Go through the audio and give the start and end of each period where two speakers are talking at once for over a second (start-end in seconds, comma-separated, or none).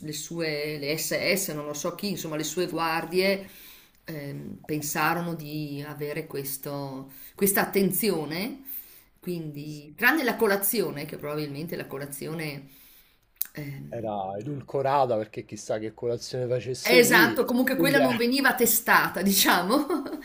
16.8-18.2